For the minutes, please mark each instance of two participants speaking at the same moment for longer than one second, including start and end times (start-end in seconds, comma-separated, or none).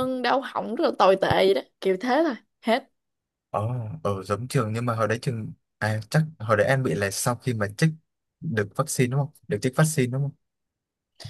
none